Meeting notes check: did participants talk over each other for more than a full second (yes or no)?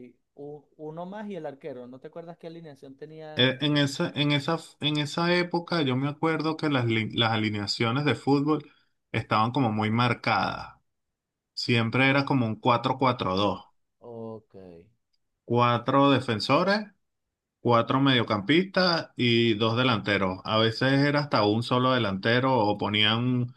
no